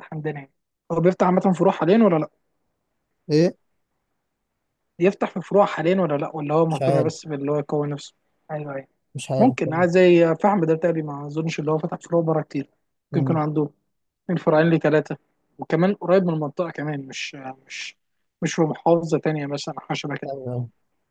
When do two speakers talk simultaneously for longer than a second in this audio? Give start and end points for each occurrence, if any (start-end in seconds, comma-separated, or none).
none